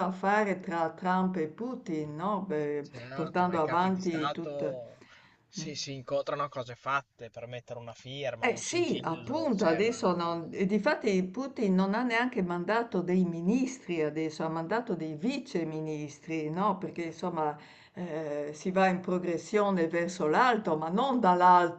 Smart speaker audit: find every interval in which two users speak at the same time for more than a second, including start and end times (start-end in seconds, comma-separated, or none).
2.8-4.8, 8.4-10.2